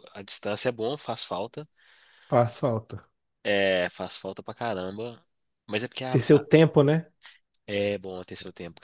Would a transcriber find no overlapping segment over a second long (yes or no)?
yes